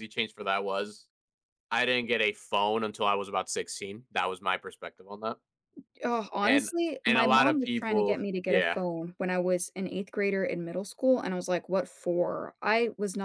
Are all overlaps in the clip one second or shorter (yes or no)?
no